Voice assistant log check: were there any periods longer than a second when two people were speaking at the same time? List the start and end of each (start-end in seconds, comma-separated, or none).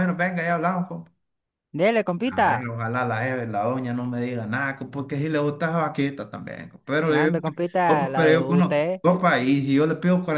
7.1-9.0